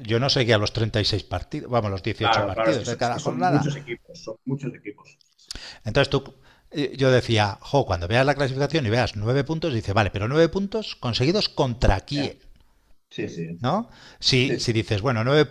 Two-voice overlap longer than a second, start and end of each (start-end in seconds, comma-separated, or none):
2.2-3.6